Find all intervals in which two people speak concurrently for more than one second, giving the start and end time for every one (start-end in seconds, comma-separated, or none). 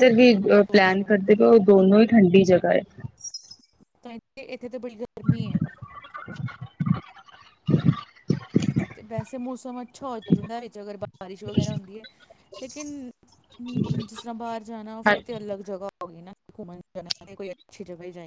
none